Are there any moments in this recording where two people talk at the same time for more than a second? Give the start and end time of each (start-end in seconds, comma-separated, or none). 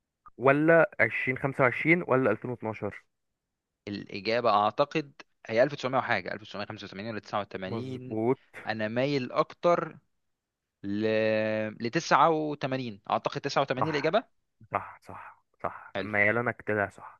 none